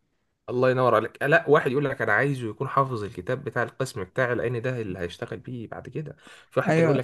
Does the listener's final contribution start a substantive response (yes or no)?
no